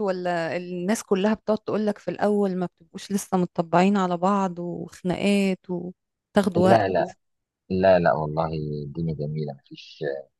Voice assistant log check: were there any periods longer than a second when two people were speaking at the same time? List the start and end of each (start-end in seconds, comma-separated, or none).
none